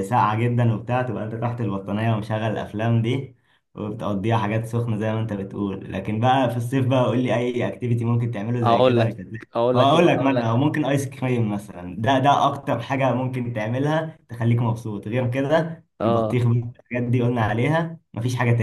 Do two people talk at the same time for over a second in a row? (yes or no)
yes